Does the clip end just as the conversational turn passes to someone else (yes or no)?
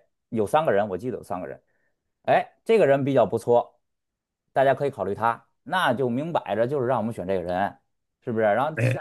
no